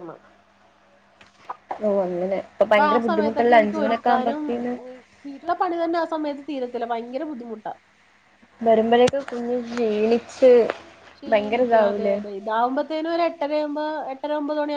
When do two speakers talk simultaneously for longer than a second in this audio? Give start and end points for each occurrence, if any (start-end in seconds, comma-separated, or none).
2.7-4.4